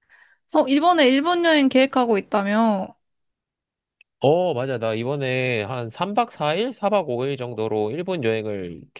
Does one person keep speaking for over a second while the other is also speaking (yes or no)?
no